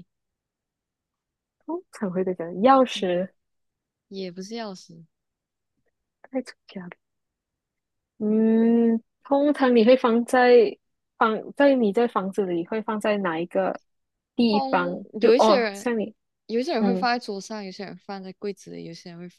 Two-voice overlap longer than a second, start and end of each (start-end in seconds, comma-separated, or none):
14.5-15.9